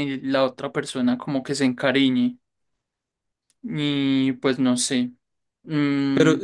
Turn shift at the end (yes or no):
yes